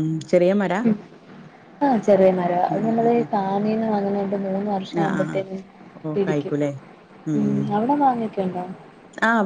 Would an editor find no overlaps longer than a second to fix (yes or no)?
yes